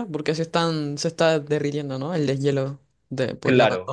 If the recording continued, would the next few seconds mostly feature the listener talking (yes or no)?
yes